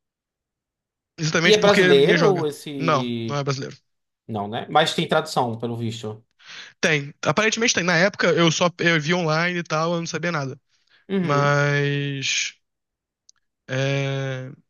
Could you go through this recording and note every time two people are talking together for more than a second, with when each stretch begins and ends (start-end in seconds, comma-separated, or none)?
1.4-3.4